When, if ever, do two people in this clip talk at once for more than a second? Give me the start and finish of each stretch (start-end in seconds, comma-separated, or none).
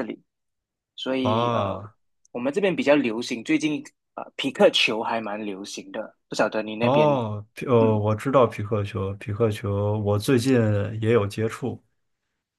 none